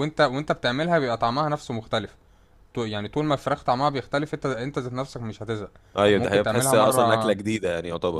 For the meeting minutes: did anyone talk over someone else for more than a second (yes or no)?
yes